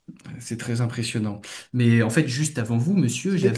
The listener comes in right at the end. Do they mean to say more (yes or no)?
yes